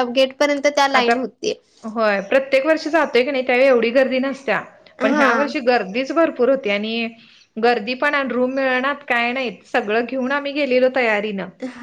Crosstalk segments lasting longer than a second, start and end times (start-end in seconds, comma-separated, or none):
none